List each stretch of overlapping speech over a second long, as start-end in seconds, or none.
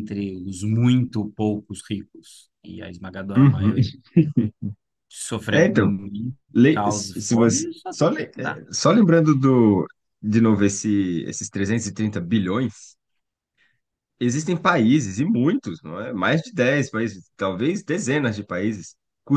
6.6-8.6